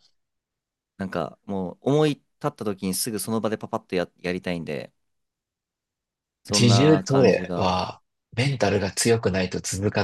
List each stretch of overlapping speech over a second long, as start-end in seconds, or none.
6.5-7.7